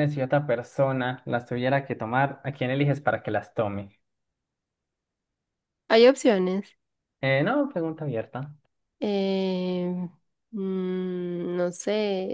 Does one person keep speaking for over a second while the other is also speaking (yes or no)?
no